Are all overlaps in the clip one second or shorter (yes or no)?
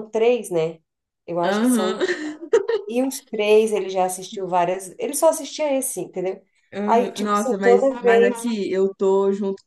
no